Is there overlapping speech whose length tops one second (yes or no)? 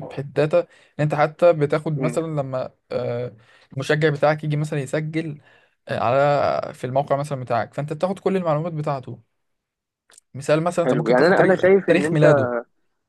yes